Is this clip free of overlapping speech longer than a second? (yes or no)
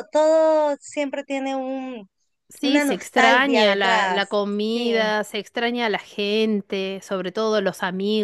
no